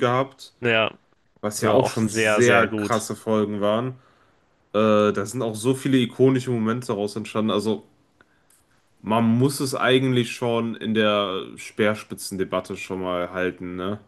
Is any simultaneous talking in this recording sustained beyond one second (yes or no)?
yes